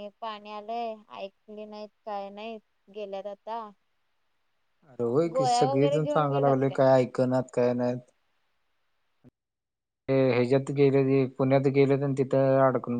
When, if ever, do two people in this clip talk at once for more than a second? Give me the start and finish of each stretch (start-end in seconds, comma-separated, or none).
5.3-6.5